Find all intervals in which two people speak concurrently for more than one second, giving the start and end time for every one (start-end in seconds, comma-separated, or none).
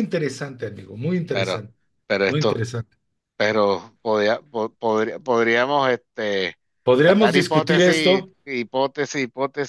7.0-8.3